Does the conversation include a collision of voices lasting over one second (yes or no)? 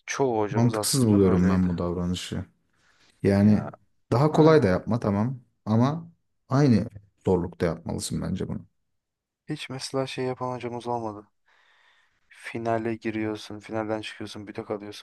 yes